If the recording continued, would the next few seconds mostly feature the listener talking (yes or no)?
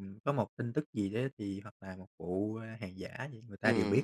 yes